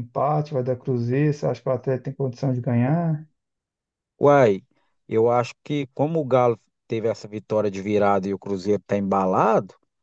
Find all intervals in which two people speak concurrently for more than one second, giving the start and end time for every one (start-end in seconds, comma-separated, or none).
none